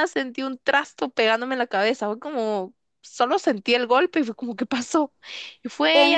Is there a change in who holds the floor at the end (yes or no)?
no